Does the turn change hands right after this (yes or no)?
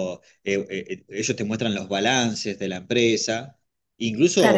yes